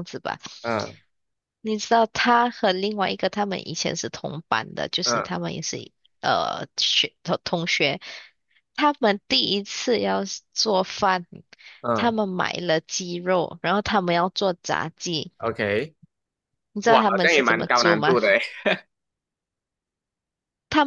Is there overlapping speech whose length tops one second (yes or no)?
yes